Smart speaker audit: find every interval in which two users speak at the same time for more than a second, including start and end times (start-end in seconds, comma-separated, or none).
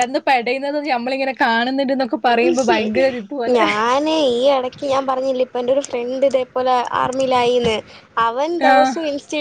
none